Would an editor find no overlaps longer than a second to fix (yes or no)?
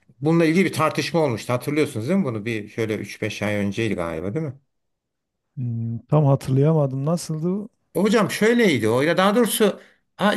yes